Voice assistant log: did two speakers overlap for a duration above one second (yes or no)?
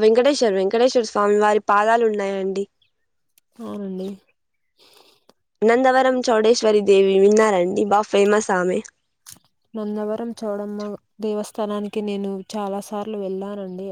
no